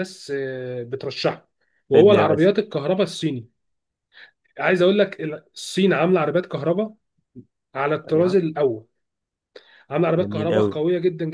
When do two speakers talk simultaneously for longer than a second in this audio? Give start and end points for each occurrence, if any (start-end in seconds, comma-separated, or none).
none